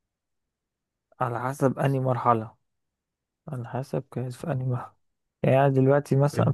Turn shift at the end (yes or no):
no